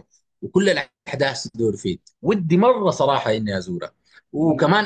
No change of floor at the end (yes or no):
yes